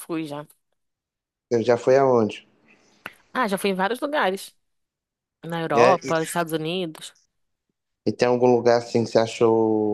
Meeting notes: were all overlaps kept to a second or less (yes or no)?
yes